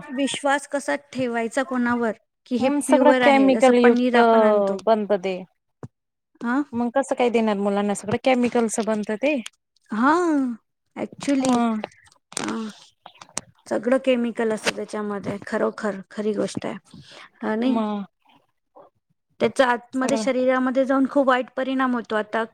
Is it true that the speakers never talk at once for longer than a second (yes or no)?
no